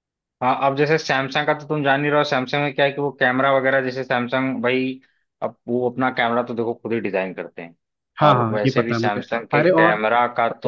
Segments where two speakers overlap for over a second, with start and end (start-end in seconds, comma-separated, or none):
8.3-10.0